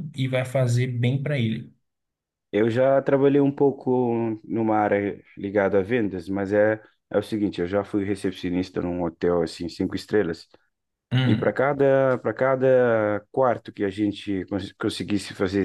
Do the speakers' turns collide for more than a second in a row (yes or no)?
no